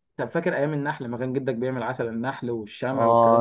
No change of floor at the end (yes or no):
no